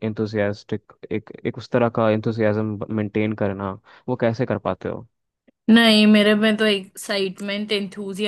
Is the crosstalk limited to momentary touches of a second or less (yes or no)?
yes